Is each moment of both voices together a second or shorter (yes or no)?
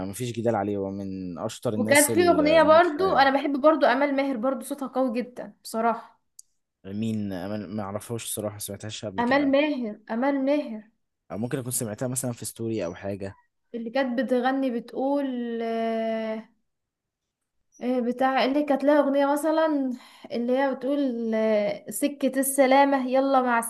no